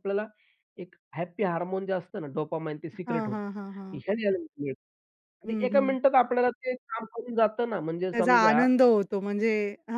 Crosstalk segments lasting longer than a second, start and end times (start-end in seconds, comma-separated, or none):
none